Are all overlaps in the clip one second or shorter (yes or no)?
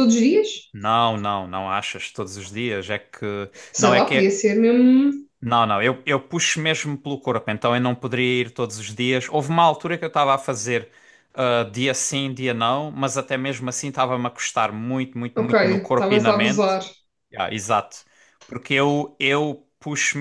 no